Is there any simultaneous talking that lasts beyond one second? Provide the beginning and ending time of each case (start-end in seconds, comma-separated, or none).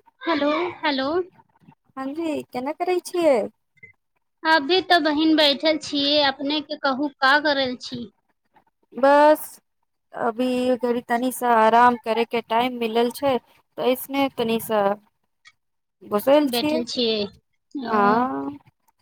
16.5-17.9